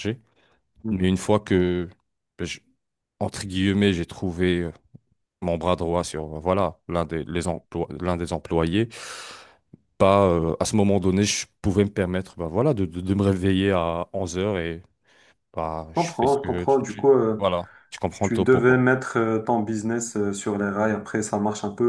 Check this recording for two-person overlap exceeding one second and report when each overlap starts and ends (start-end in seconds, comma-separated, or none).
16.0-17.5